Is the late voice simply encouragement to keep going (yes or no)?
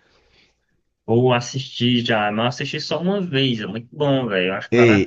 no